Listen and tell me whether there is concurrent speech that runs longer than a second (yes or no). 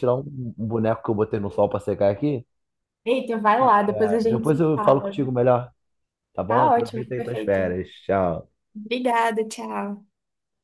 yes